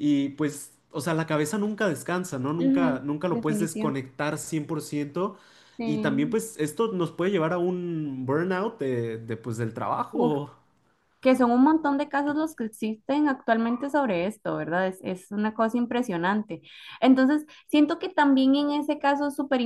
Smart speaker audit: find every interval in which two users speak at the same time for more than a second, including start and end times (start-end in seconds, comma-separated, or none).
2.6-3.9